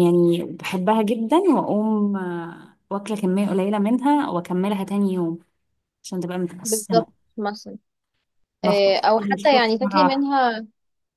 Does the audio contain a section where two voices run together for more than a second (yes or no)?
yes